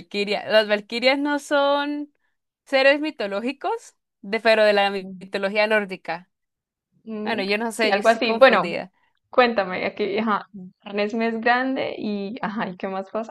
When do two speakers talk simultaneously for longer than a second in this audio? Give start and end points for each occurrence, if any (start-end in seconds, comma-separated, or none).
7.2-8.7